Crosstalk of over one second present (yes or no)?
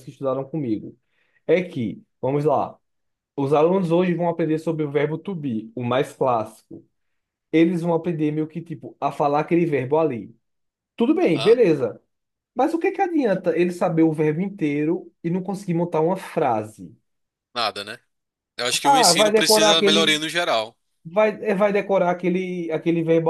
yes